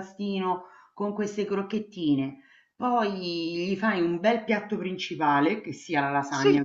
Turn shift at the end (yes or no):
no